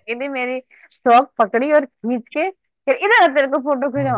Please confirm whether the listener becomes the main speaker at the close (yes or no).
no